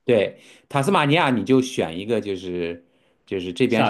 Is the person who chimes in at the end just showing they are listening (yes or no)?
yes